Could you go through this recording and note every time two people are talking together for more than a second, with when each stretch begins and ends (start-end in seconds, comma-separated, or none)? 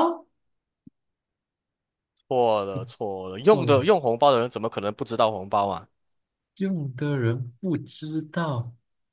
none